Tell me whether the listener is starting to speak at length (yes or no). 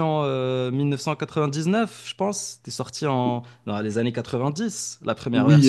yes